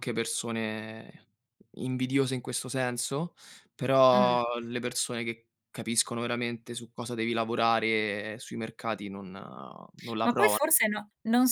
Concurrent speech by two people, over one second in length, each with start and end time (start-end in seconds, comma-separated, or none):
none